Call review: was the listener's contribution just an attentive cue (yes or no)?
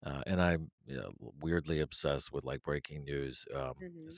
yes